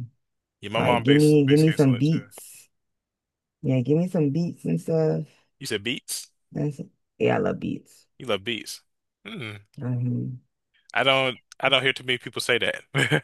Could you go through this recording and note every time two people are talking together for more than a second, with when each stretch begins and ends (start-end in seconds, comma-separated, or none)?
0.8-2.2